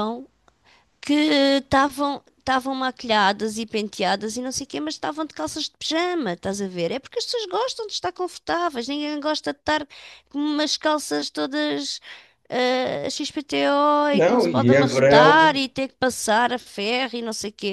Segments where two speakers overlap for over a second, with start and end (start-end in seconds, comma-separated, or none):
14.1-15.6